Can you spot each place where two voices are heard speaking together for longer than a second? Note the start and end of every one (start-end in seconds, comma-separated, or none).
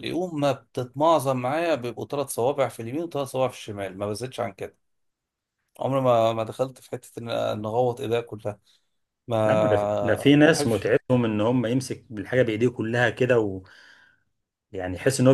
9.4-10.9